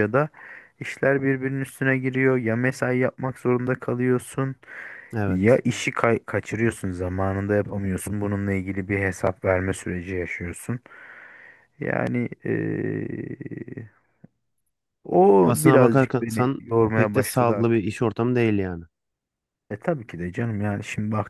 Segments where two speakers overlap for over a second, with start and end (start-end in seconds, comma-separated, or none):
15.4-17.9